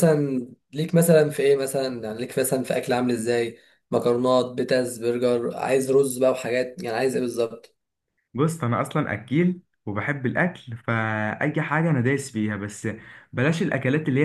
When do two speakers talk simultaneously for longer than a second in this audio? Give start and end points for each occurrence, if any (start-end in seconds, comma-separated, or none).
none